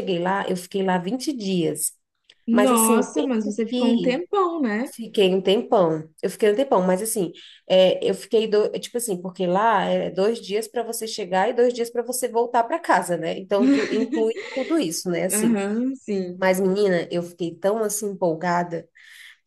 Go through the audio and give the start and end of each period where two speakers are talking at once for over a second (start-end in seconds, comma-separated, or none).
2.5-4.2